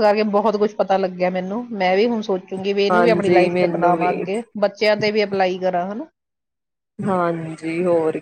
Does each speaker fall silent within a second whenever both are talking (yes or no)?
no